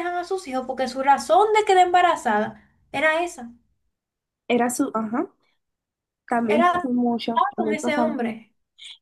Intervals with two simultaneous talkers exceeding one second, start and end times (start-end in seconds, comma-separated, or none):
6.5-8.3